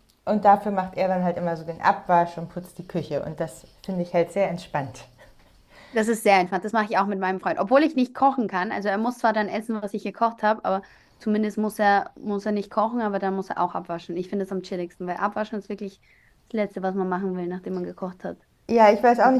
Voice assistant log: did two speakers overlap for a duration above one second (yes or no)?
no